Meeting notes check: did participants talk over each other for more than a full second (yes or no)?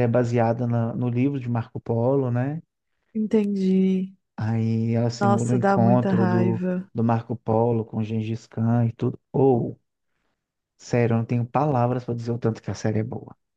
yes